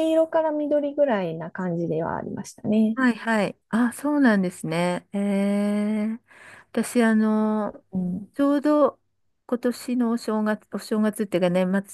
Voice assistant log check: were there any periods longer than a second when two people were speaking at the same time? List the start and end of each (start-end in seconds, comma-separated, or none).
none